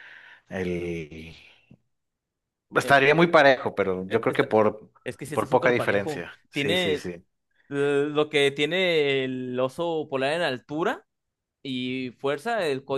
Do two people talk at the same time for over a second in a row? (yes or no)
yes